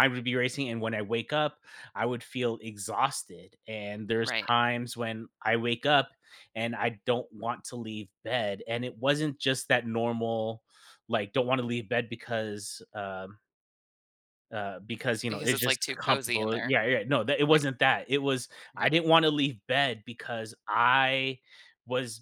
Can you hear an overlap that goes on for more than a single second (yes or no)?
yes